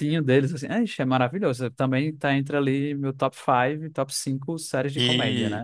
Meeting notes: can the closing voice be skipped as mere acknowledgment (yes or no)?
no